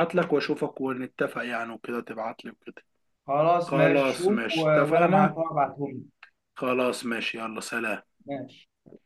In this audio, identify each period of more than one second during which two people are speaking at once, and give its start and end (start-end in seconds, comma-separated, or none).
3.6-5.4